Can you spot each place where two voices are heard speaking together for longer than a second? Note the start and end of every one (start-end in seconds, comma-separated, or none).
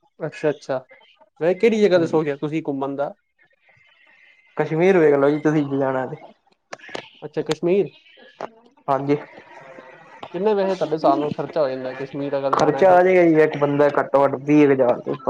none